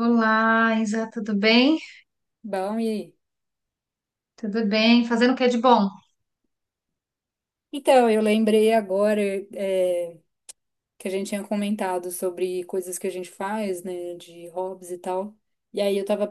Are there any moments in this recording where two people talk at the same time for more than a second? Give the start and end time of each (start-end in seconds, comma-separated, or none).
none